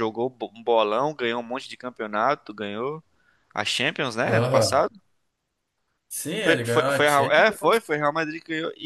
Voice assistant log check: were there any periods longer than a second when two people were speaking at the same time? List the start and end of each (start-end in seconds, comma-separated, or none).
6.4-7.8